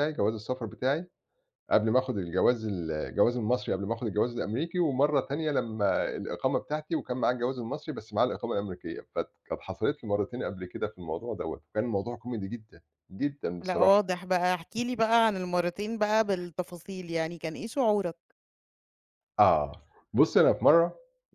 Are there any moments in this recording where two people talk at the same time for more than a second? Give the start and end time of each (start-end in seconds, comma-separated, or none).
none